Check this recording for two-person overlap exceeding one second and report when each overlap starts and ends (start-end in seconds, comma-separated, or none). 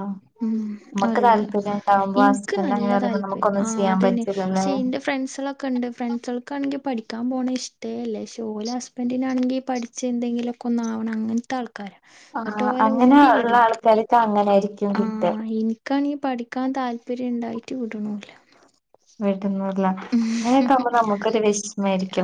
2.3-4.7